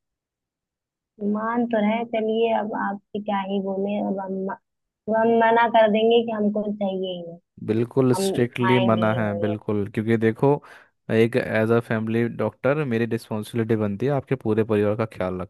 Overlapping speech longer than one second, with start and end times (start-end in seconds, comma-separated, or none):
8.1-9.6